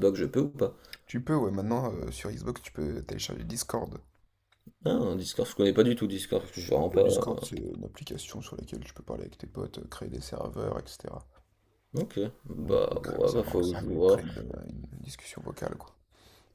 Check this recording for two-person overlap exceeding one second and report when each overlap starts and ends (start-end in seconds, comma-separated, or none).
12.6-14.2